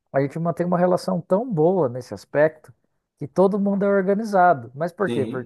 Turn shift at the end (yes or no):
no